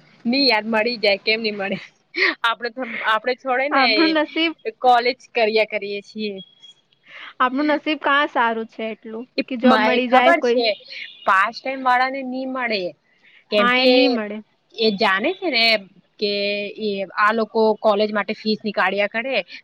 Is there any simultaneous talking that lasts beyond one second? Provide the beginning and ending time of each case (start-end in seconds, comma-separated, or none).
none